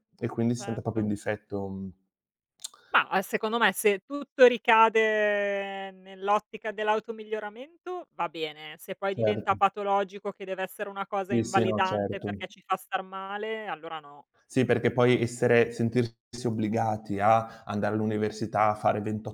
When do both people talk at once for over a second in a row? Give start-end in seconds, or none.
11.3-12.5